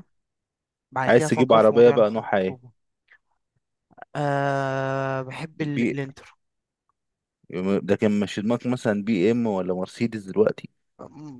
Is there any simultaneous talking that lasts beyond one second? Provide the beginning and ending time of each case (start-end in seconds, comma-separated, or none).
1.1-2.6